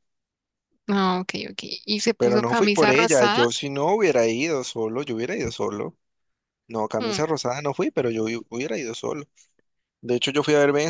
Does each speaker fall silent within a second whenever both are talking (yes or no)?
no